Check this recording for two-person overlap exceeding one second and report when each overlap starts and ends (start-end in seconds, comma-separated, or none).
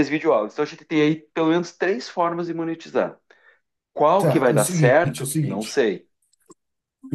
4.2-5.8